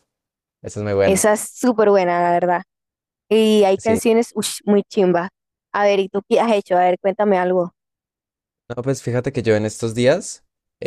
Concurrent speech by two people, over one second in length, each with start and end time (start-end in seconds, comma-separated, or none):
none